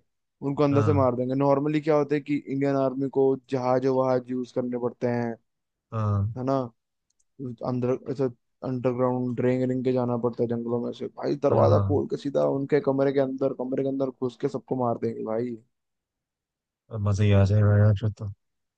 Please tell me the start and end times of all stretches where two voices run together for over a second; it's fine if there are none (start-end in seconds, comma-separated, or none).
none